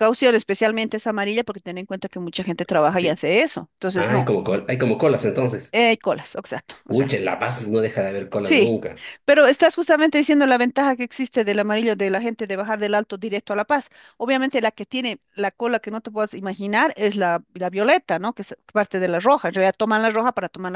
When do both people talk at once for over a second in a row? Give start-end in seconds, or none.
none